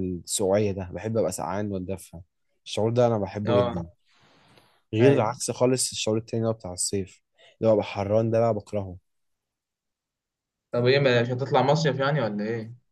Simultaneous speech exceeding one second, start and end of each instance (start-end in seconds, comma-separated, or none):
none